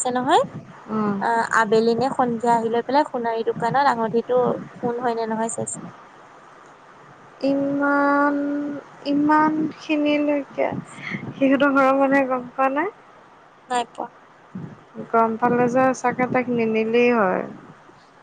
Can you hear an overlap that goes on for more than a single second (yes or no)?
no